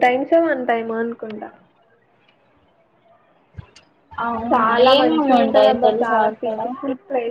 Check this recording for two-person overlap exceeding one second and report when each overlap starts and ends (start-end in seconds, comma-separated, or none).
4.5-6.6